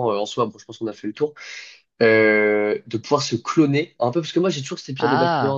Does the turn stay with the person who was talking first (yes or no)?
yes